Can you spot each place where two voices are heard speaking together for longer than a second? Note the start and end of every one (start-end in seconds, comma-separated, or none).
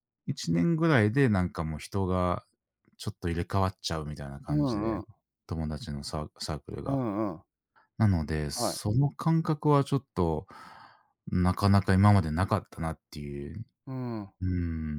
none